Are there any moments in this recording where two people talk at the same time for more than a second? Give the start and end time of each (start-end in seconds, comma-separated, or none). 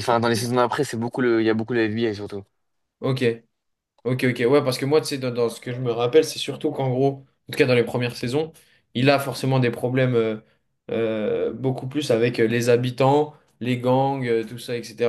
none